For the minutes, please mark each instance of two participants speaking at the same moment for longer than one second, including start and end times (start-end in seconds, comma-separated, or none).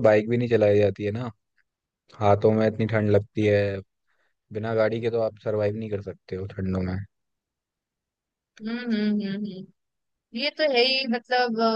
none